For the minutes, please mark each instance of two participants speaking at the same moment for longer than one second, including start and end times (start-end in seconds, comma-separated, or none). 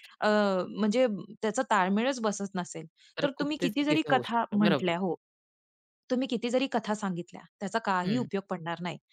3.2-5.0